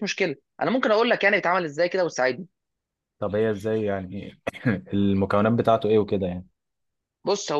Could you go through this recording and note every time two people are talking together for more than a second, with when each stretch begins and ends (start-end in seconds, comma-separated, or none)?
none